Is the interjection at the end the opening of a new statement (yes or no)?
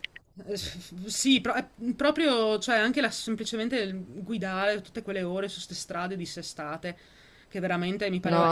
yes